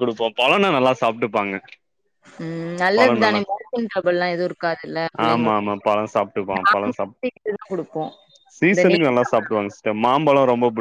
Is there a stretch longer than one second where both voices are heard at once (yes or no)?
yes